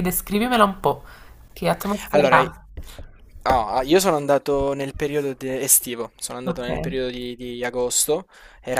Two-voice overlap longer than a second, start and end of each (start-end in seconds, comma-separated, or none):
none